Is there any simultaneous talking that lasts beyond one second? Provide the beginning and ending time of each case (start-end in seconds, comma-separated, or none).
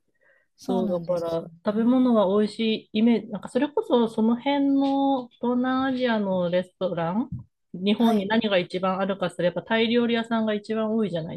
0.6-2.1